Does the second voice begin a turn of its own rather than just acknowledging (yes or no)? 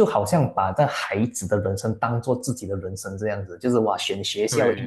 no